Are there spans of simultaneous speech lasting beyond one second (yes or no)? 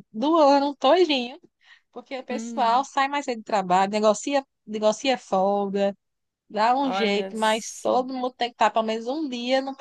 yes